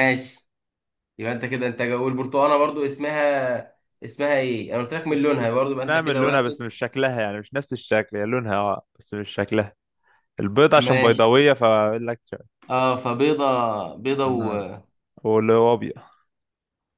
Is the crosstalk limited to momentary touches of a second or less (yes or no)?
no